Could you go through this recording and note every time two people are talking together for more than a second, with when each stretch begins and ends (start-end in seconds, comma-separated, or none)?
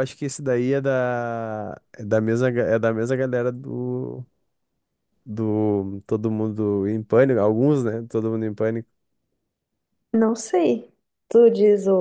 none